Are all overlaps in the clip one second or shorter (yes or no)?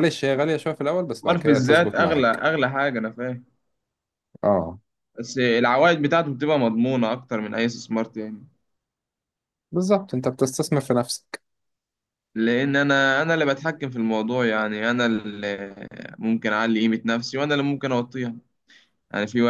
no